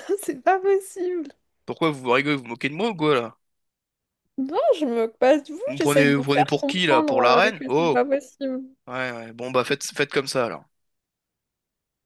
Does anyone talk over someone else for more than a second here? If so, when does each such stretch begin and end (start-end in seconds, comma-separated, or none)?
5.7-8.0